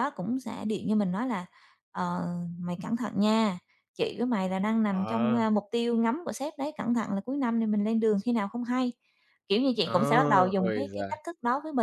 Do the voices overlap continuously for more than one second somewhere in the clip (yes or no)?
yes